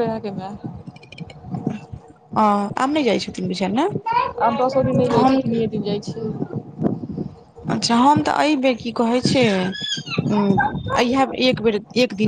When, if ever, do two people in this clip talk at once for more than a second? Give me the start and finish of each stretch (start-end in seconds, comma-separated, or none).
none